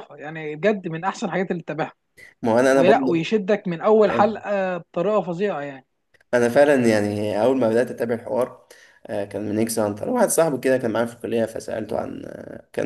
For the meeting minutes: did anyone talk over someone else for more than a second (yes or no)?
no